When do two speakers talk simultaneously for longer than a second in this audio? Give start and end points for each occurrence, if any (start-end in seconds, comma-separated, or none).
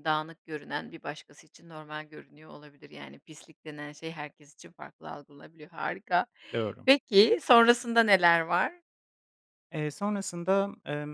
none